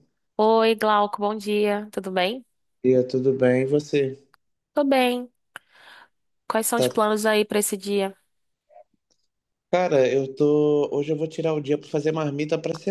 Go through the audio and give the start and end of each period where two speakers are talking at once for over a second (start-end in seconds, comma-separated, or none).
none